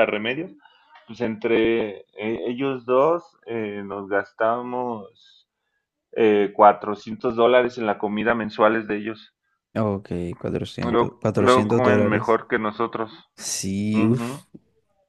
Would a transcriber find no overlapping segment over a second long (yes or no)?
no